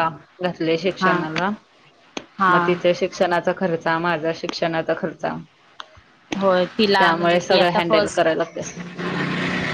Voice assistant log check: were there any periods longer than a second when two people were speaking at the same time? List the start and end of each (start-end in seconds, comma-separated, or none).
6.4-8.3